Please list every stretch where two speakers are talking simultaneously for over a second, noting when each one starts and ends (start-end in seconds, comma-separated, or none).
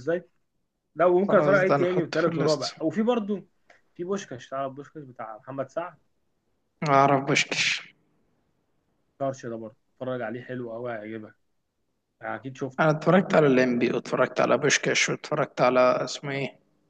1.3-2.7